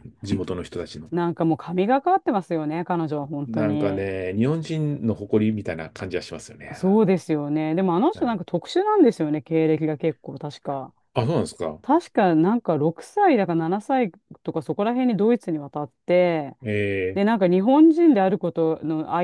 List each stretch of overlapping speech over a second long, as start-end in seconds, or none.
none